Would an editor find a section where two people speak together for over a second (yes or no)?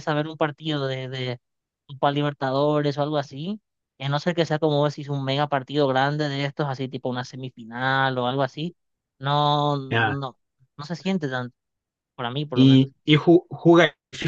no